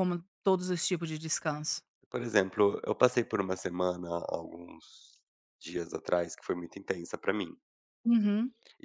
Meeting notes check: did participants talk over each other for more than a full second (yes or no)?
no